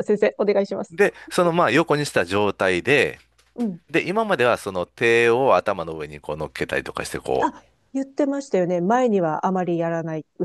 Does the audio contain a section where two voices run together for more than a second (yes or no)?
no